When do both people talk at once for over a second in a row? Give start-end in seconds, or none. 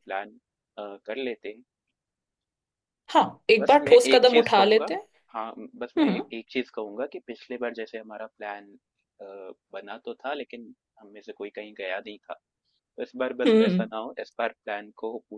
3.6-4.9